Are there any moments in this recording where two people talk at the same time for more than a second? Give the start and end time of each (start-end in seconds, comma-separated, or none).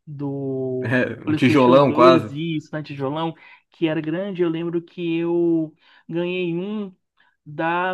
0.8-2.3